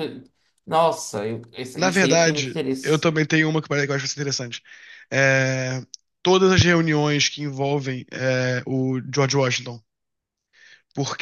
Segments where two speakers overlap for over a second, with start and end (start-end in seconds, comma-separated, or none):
1.8-3.1